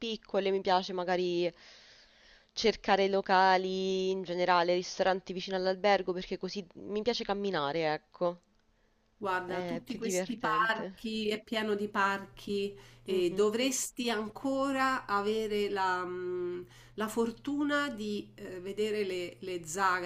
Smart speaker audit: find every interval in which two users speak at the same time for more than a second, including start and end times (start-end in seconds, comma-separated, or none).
9.4-11.0